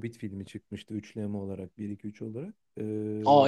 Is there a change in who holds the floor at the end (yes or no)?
yes